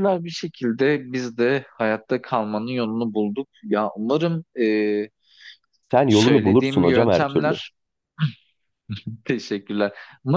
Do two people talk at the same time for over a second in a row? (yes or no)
yes